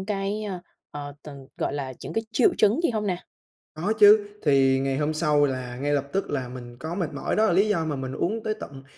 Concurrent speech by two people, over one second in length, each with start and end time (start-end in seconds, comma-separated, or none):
none